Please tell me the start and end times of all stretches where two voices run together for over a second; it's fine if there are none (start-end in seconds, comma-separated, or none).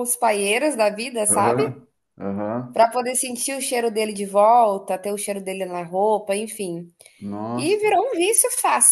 none